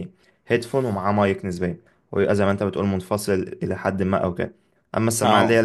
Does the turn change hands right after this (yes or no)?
no